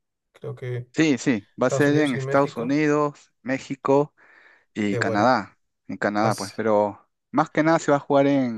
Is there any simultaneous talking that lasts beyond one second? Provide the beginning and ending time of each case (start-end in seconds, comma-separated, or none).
1.6-2.8